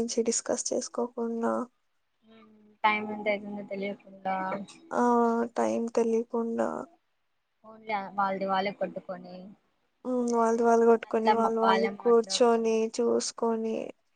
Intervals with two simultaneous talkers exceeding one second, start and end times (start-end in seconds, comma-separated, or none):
11.0-12.7